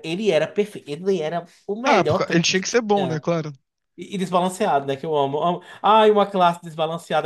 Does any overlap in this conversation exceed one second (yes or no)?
yes